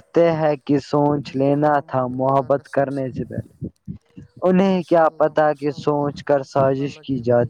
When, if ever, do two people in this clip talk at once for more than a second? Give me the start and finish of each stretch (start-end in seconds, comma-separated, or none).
1.2-3.1, 4.7-6.8